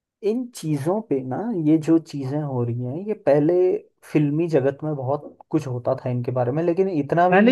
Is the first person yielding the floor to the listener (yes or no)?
yes